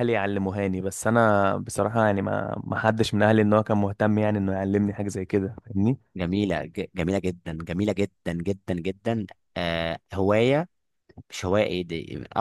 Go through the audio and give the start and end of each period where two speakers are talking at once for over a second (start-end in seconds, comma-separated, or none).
none